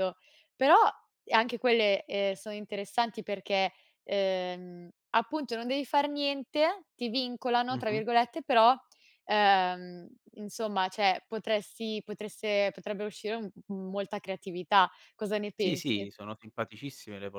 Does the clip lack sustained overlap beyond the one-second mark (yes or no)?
yes